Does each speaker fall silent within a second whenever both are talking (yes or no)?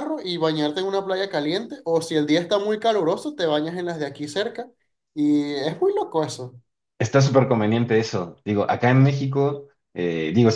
yes